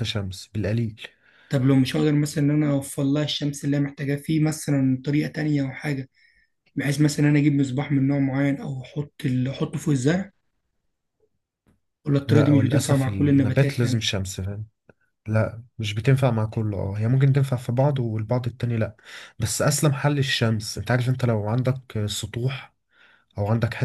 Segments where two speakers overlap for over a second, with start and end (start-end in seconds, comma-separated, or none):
12.3-14.1